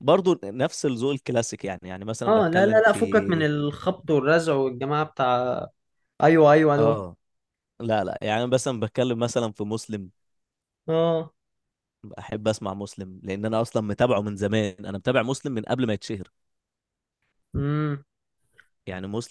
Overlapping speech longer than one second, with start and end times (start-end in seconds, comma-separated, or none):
2.3-3.5